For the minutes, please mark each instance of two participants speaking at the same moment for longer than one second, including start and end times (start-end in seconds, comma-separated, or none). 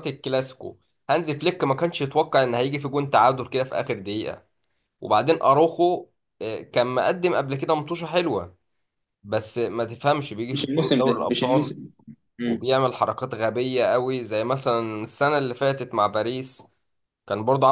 10.5-11.8